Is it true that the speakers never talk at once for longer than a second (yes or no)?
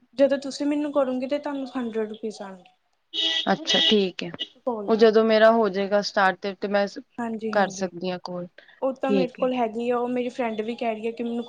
yes